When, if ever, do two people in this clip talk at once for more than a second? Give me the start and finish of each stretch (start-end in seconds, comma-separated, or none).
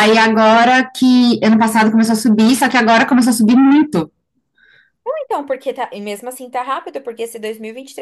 none